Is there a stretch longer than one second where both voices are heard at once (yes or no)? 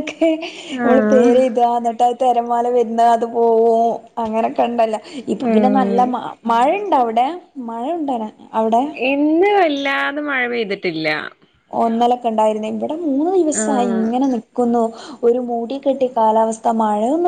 no